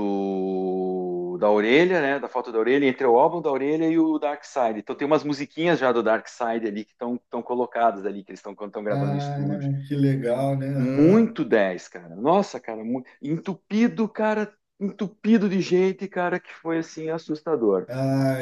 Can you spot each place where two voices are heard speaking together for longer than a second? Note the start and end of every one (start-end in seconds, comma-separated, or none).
none